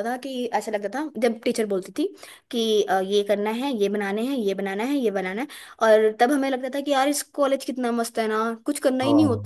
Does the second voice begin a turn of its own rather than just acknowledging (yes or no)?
no